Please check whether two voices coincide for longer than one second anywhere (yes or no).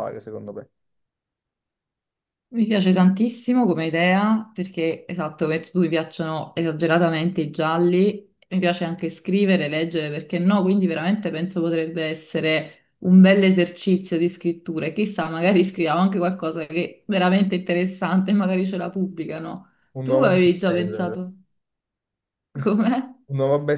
yes